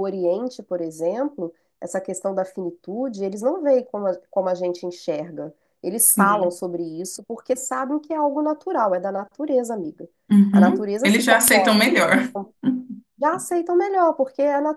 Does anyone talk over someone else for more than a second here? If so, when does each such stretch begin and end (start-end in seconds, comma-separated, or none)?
10.5-11.8